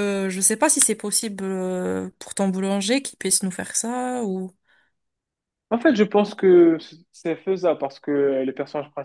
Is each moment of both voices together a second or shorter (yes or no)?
yes